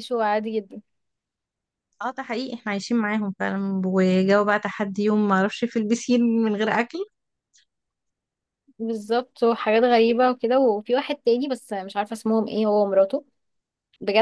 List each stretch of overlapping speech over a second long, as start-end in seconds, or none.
none